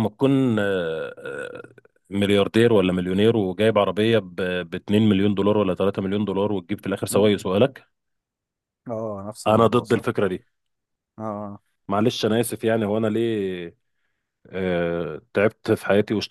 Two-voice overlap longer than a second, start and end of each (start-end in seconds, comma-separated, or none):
none